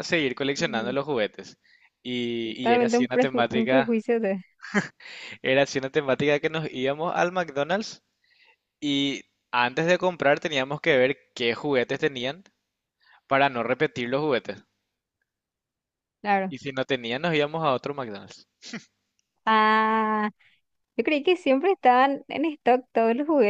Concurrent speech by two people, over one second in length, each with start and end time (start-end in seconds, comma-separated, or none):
2.4-3.9